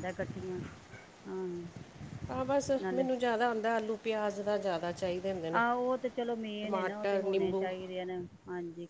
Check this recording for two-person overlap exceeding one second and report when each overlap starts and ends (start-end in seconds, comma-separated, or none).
none